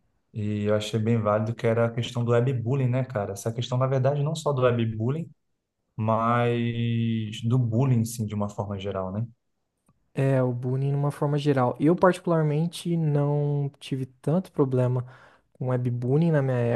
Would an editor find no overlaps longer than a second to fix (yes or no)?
yes